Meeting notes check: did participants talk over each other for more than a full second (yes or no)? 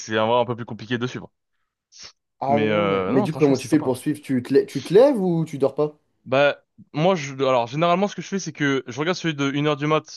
yes